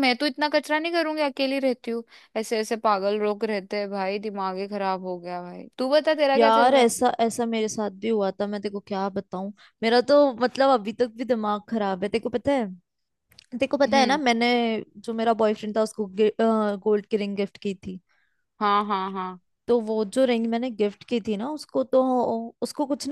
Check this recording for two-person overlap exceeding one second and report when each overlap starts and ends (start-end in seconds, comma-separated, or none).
none